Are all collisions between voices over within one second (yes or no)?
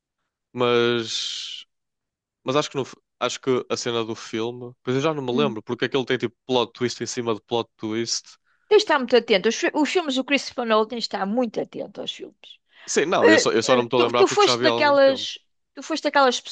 no